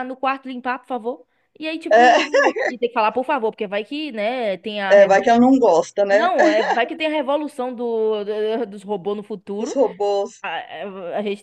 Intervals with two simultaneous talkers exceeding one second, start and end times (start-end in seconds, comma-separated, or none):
none